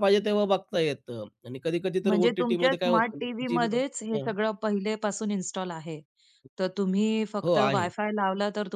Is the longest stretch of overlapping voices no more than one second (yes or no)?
no